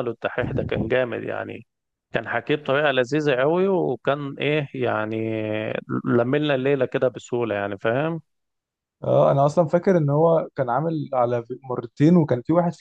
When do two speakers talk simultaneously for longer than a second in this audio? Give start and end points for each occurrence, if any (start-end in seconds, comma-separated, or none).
none